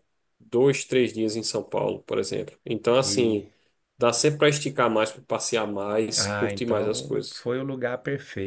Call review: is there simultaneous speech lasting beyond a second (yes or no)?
yes